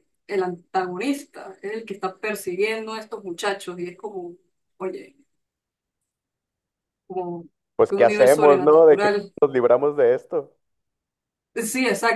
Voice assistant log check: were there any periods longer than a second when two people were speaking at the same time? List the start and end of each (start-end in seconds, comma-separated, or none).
7.9-9.3